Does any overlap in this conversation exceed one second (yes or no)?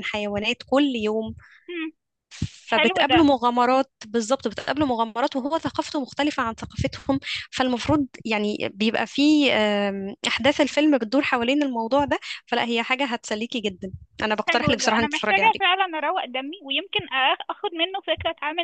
yes